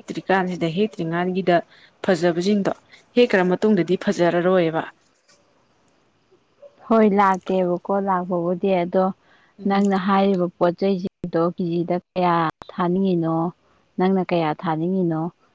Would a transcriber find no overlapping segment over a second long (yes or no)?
yes